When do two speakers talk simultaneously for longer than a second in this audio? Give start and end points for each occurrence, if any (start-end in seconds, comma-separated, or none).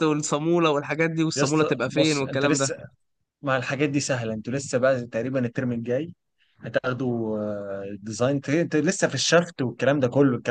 1.3-2.7